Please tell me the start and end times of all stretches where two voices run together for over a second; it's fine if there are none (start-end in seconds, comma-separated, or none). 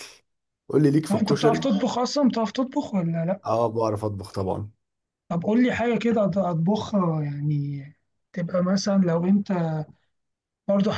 none